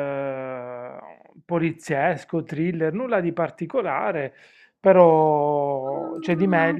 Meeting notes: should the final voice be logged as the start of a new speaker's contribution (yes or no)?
yes